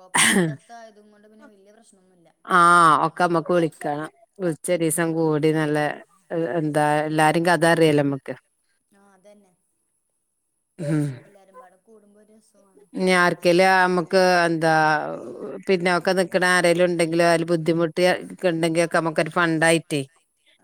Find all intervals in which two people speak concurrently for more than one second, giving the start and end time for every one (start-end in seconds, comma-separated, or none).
none